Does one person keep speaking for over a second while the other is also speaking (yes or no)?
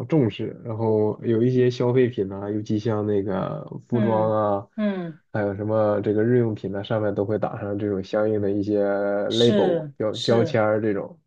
yes